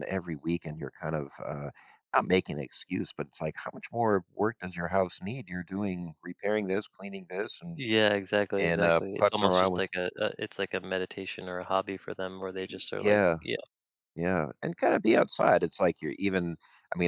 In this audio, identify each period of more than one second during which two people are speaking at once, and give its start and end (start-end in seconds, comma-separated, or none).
8.6-9.9